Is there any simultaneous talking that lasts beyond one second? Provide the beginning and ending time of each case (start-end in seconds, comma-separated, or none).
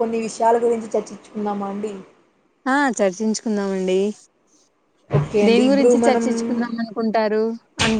none